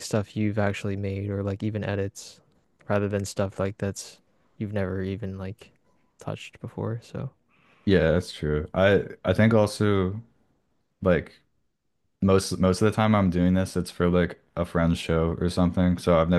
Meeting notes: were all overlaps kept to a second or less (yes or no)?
yes